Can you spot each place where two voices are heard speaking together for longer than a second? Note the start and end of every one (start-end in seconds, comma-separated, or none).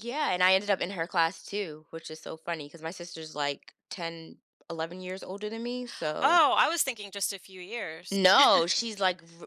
none